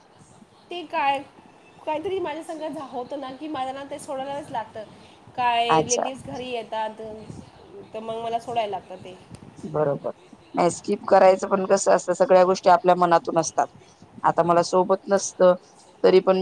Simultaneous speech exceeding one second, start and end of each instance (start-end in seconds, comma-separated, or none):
none